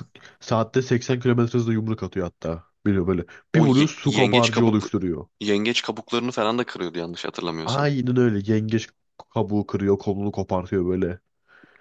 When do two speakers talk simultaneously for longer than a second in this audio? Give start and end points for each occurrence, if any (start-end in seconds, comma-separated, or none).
3.5-4.9